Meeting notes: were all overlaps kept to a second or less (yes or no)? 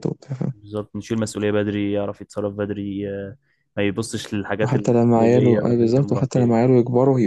no